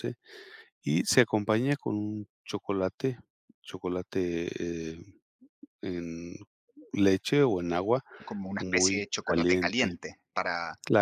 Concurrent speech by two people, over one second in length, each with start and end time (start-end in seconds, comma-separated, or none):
8.6-10.0